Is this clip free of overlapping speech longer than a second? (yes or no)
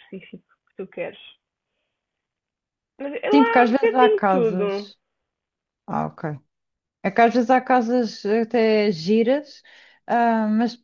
no